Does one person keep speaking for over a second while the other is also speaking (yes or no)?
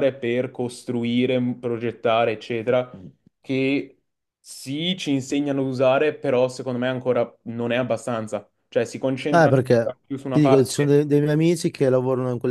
yes